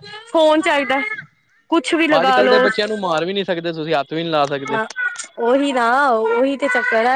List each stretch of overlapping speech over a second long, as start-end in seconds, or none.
none